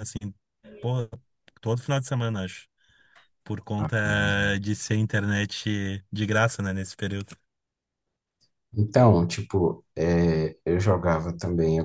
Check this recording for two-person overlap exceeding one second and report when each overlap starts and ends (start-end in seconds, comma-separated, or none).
none